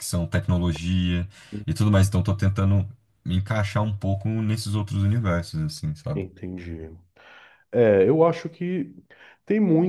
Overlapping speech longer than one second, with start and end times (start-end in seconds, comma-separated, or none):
none